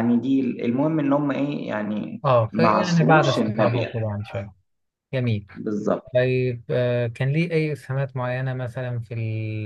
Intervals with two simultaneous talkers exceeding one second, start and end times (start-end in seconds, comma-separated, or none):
2.2-4.1